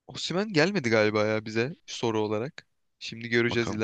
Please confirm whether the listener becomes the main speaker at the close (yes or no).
no